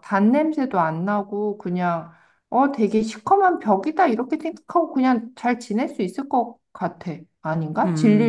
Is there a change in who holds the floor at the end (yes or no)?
yes